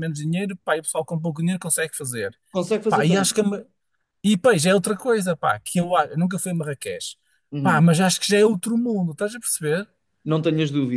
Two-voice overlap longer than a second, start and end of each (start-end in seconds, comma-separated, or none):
none